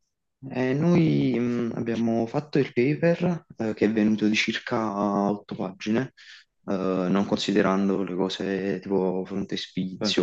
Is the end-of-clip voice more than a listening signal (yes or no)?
no